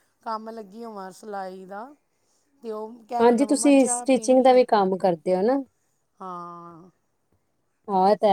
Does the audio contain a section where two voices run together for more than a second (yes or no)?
yes